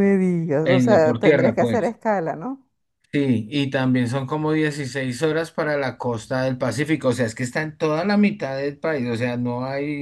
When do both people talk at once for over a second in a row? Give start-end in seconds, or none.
0.6-2.0